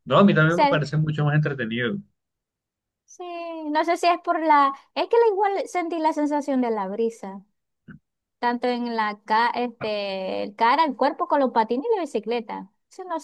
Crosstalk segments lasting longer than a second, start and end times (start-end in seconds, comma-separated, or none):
none